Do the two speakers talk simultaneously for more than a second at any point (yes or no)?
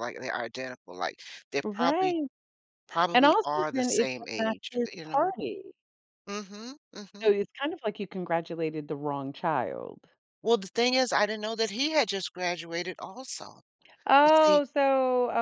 yes